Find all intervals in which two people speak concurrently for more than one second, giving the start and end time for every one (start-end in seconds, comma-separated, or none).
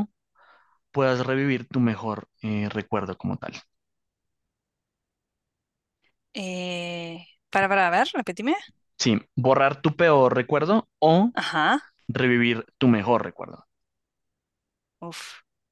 none